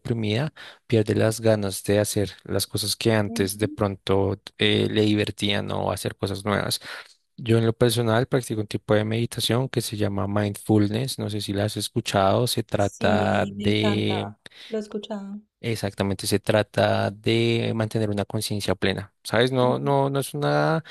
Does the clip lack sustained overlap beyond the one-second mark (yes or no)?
no